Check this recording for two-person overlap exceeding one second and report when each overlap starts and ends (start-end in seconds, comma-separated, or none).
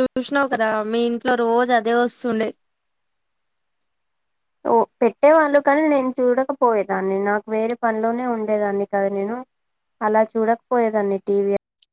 none